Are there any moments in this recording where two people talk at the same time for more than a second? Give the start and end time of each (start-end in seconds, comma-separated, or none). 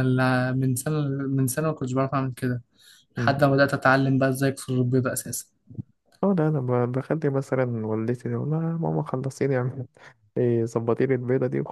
none